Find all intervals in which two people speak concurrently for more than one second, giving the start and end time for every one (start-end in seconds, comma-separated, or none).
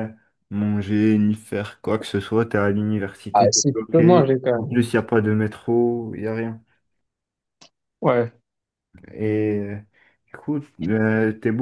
3.3-4.9